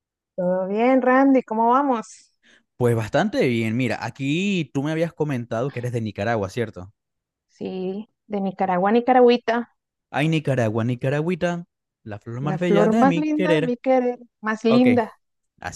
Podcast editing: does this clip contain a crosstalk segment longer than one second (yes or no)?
yes